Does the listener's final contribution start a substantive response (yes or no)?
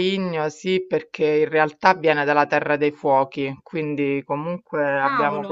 no